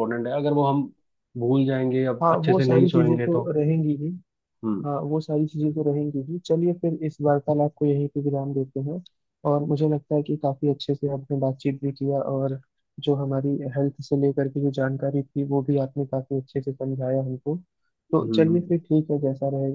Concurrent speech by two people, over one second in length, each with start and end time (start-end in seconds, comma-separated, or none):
2.2-3.5